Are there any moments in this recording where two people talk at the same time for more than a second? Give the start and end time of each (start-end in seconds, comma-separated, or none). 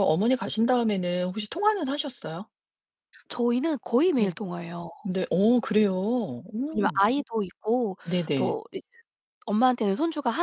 none